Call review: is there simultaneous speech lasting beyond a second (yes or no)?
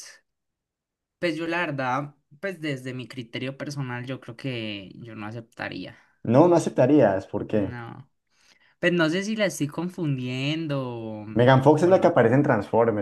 no